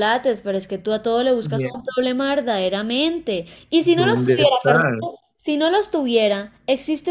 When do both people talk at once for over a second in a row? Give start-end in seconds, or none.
3.8-5.0